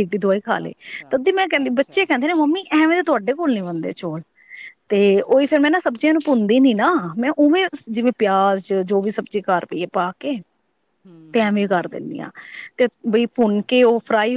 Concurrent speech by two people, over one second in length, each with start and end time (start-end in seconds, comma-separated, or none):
none